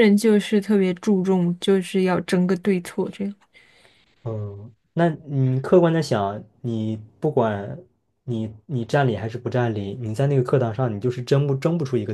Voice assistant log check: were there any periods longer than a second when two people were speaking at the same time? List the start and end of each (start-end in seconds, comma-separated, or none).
none